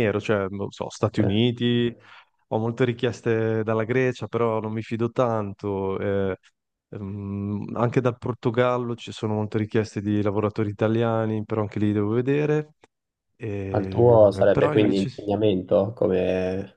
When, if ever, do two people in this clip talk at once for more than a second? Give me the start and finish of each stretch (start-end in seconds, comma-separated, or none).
13.7-15.1